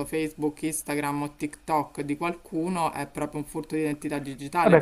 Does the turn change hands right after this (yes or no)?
yes